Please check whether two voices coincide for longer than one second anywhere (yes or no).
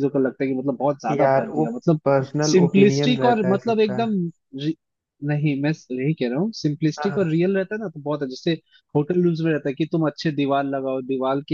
yes